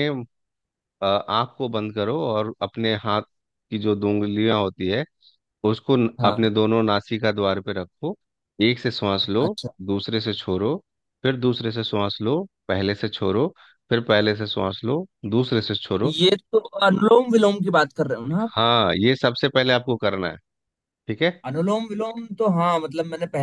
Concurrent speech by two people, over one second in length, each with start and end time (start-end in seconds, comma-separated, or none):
none